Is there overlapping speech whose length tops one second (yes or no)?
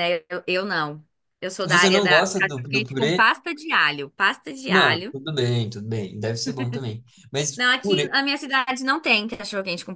yes